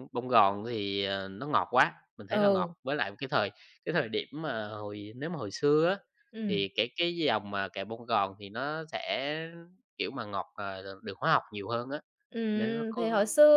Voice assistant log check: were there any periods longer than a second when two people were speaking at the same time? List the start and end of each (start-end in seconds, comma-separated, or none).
none